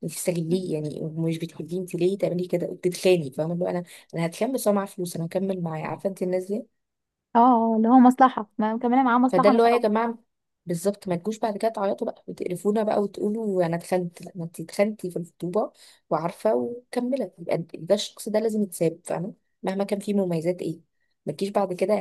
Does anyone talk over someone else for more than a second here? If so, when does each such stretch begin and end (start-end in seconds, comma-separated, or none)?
none